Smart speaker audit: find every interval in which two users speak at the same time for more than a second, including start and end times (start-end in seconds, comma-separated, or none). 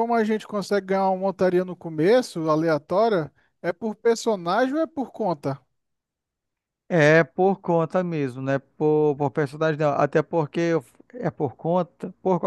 none